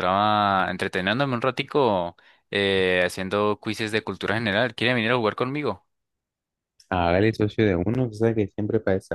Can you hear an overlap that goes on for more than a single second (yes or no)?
no